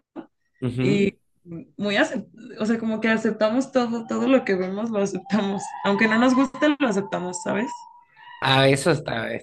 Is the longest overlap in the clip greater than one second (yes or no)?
no